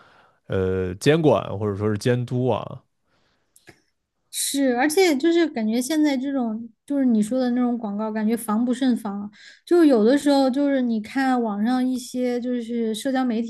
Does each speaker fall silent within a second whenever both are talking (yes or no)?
yes